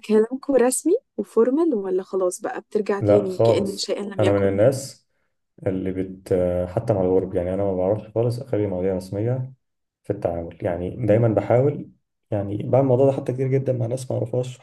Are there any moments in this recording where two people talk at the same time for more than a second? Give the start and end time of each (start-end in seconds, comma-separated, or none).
3.0-4.6